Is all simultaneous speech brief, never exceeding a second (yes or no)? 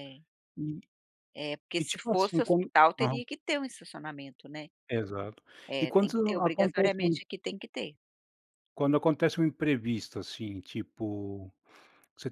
no